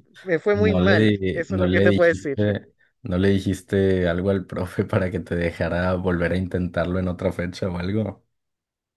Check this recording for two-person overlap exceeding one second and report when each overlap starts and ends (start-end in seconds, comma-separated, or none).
0.5-2.4